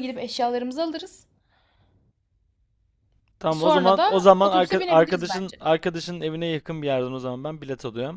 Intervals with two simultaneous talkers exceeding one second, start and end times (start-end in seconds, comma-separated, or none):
3.5-5.6